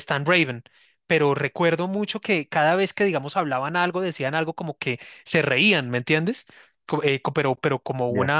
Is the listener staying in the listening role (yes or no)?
yes